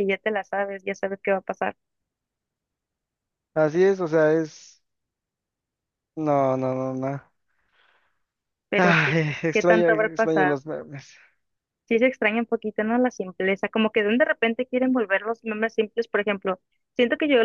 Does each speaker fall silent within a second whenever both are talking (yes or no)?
no